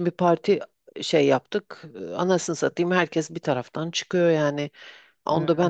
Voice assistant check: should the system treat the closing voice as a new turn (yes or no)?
no